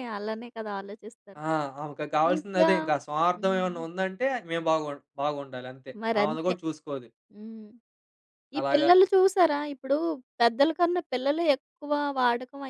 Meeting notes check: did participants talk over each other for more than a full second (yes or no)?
no